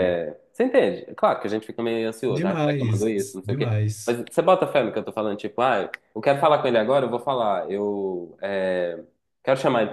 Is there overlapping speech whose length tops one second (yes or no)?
yes